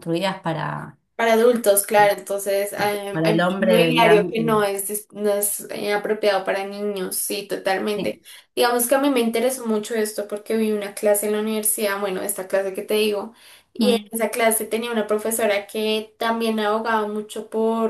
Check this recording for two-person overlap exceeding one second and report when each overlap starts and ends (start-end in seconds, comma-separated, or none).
3.1-4.5